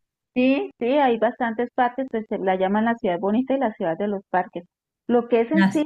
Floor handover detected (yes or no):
no